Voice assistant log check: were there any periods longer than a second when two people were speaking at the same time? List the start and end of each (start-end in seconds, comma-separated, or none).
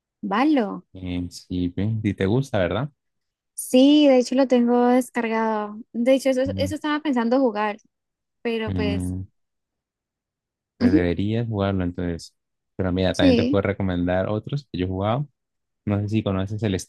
none